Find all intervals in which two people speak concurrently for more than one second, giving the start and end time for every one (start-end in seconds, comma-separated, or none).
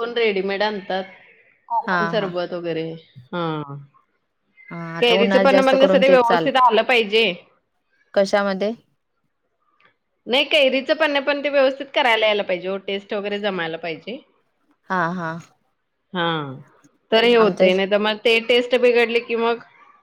5.0-6.6